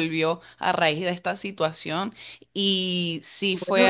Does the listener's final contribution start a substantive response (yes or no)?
yes